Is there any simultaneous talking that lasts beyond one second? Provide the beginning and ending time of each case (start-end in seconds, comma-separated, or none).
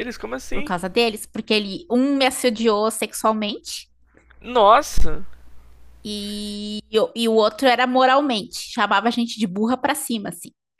none